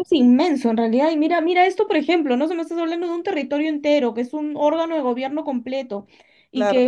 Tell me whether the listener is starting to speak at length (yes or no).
no